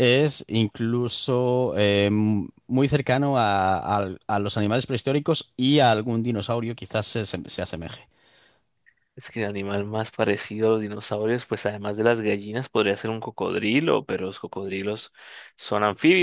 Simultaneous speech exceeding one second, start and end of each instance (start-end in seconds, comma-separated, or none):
none